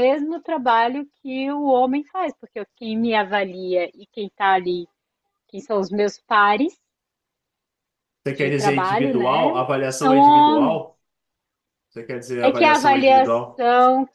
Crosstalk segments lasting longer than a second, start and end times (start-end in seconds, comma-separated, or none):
8.3-10.8, 12.4-13.7